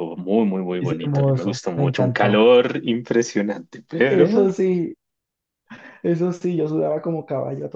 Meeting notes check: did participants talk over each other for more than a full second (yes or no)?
yes